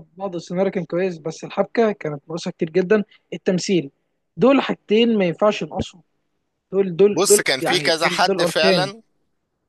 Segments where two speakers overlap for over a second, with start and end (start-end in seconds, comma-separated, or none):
7.1-8.9